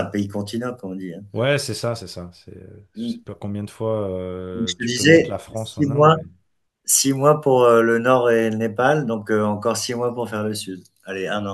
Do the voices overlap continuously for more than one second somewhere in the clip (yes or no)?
yes